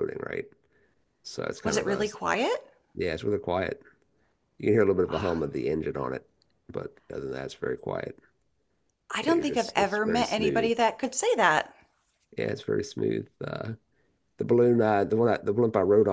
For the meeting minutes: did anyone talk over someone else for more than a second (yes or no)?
yes